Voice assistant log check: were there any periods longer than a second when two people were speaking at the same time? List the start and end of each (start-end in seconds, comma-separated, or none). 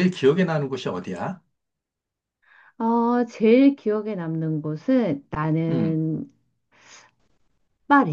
none